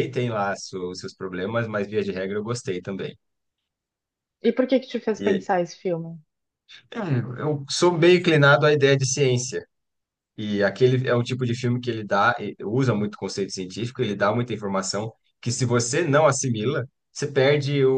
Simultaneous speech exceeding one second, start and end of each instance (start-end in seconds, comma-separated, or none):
none